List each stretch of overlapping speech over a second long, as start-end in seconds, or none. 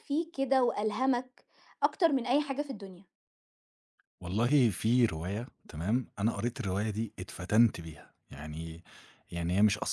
none